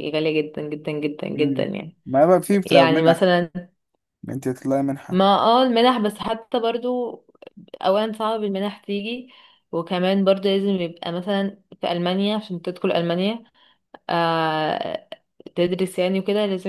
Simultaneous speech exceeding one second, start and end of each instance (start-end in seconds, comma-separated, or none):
none